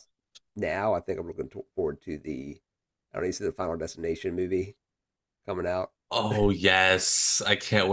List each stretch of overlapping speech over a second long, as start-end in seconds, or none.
none